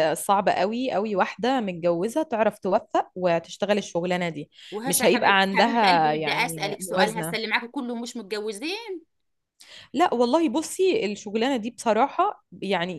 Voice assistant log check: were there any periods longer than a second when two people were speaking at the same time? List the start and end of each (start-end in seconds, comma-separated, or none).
4.8-7.4